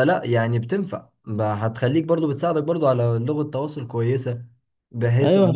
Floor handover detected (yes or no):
yes